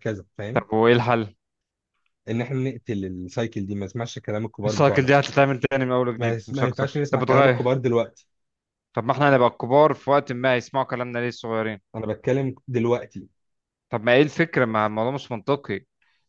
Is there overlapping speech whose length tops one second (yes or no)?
yes